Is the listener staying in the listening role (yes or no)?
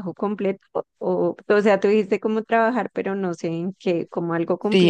no